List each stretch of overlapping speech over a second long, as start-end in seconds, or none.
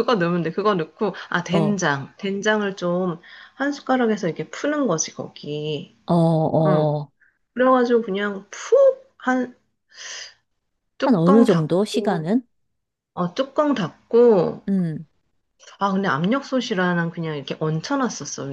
11.0-12.3